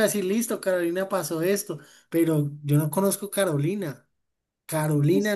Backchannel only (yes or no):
no